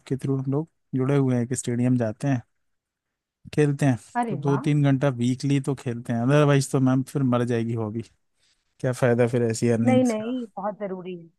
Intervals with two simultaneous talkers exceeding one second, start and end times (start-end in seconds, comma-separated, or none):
none